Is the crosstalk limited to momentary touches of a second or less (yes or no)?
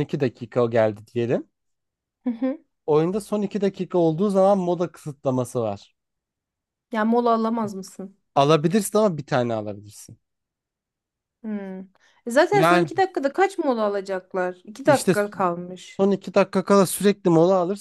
yes